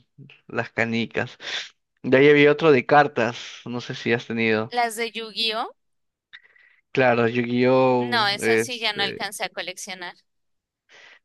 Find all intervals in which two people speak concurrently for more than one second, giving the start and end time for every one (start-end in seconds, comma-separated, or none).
8.0-9.2